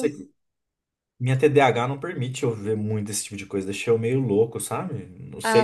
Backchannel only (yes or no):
no